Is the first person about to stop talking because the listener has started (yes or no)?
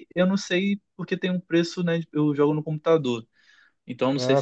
no